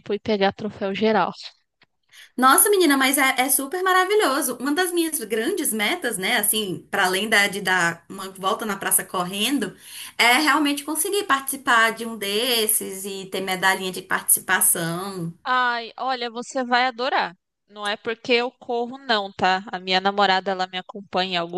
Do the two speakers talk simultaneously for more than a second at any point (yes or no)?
no